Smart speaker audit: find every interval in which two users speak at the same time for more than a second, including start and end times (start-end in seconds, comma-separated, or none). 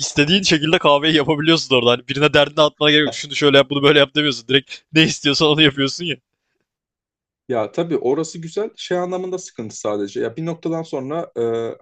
none